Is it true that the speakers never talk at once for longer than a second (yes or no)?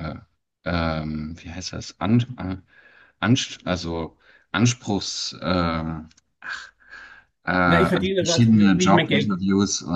no